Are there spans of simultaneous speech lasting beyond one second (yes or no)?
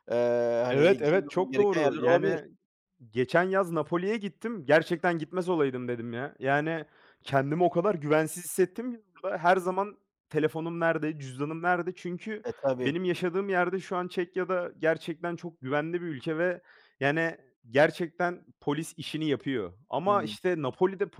yes